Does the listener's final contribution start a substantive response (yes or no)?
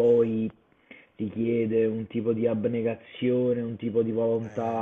no